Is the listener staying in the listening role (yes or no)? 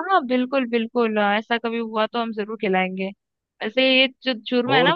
yes